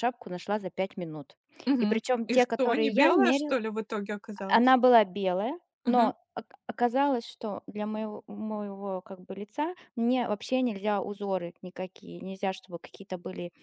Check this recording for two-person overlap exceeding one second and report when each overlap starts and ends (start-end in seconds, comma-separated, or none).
1.8-3.6